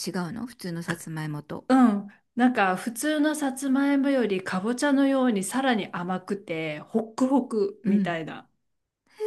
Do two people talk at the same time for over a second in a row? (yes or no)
no